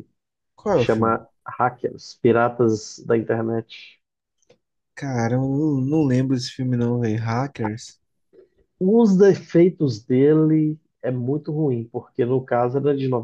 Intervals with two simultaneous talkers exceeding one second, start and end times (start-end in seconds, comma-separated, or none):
none